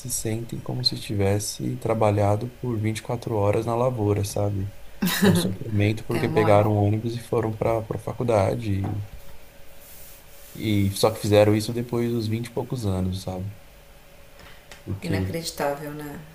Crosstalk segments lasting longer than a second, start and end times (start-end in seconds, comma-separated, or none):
none